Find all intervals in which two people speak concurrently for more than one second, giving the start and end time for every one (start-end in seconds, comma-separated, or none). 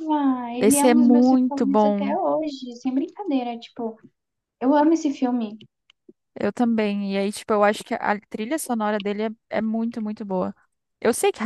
0.6-2.1